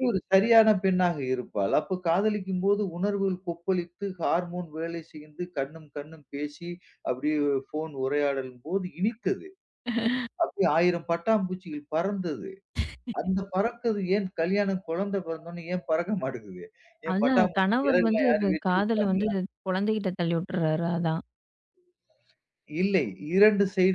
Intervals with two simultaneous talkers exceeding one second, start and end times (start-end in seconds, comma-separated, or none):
17.1-19.3